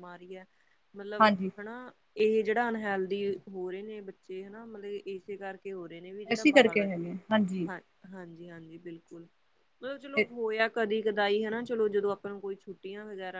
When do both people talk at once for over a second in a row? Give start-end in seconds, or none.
none